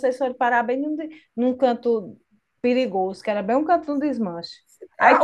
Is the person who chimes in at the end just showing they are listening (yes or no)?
no